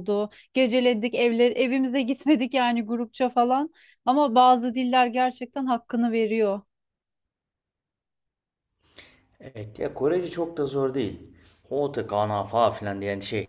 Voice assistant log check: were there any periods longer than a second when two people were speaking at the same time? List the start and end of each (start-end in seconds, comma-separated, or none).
none